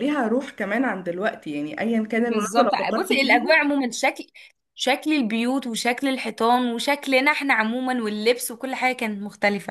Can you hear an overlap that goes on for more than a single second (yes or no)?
yes